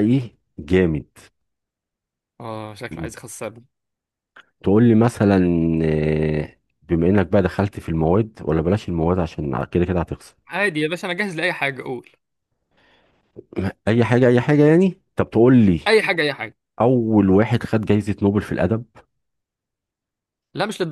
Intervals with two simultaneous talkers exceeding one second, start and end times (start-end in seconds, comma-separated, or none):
none